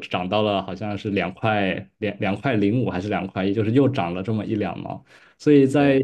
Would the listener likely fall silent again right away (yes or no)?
yes